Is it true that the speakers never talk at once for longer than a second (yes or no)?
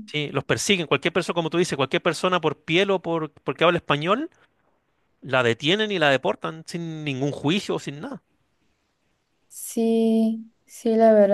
yes